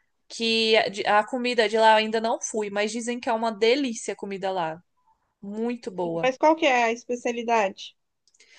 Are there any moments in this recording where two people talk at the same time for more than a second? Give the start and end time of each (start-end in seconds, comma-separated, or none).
none